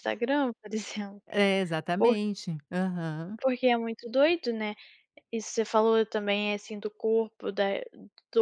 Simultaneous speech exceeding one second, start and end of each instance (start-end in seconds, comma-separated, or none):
none